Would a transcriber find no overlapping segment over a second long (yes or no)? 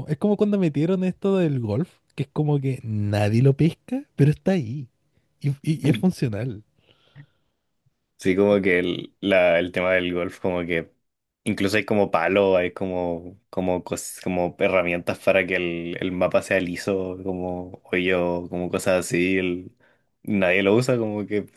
yes